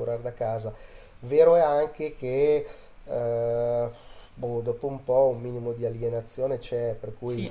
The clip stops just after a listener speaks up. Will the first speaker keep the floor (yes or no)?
yes